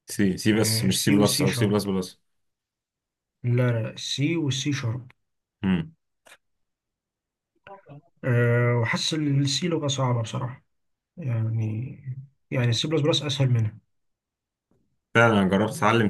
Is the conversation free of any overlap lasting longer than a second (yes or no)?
no